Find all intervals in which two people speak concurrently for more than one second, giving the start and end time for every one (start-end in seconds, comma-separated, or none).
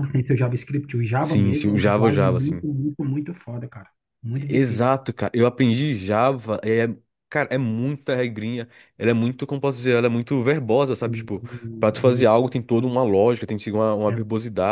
1.2-2.6